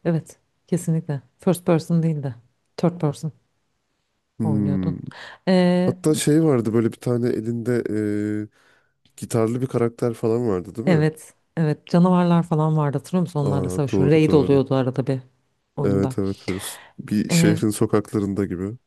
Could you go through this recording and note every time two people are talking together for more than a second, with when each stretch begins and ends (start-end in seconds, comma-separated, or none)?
13.4-14.7